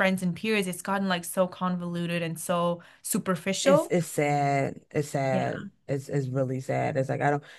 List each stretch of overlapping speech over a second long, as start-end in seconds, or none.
none